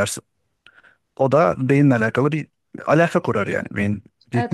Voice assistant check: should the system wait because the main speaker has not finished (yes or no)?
no